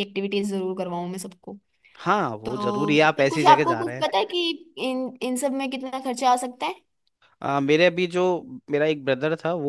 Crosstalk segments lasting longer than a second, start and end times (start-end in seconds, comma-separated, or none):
2.4-4.1